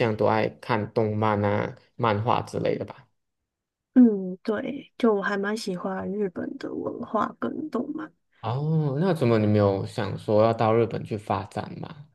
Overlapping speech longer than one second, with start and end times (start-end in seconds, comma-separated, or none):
none